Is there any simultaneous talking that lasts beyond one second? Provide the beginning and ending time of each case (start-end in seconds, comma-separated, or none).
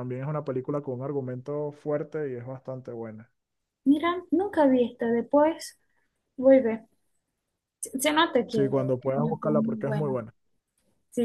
8.5-10.2